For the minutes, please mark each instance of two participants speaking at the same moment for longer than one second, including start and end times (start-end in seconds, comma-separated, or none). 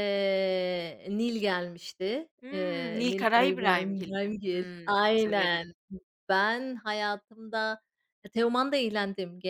2.4-5.7